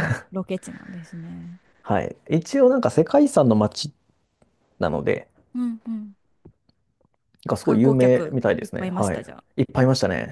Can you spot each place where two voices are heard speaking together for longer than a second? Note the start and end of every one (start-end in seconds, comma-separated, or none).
7.6-9.4